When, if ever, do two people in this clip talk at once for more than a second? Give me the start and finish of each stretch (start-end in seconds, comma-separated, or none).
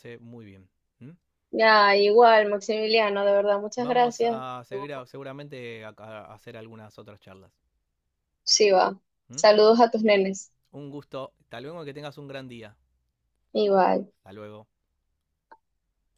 3.8-5.0